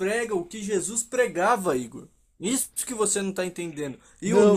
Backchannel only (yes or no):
yes